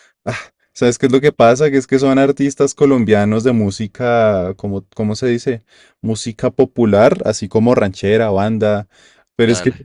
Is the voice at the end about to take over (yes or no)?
no